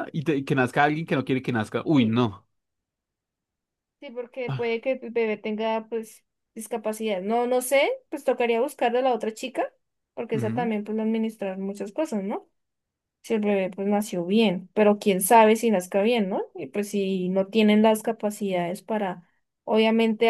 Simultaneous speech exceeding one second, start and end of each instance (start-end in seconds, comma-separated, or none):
none